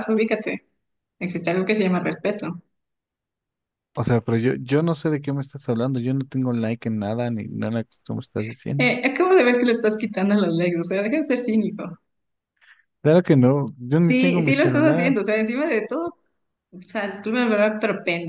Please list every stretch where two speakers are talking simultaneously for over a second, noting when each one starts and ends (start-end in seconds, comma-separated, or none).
13.9-15.2